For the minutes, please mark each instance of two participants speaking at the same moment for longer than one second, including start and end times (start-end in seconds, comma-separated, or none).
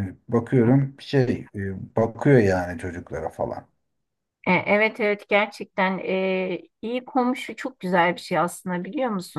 none